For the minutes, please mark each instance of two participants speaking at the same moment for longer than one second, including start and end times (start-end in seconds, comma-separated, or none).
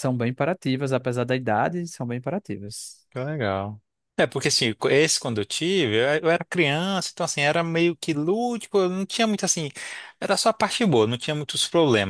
none